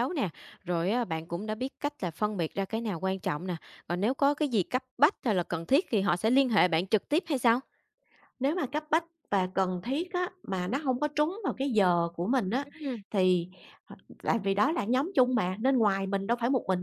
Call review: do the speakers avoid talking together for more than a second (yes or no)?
yes